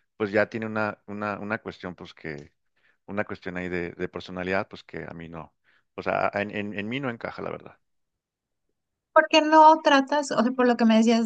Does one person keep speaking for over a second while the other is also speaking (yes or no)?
no